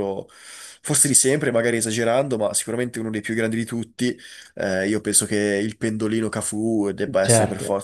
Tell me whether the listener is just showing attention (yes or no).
no